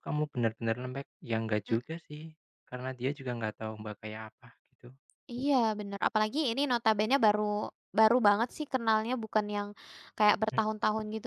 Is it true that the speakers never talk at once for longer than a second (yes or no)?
yes